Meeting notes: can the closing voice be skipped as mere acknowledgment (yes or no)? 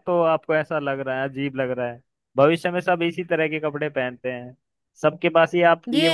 yes